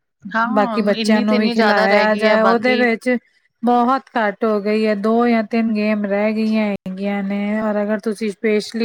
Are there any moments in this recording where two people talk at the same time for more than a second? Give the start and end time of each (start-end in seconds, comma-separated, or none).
0.5-2.8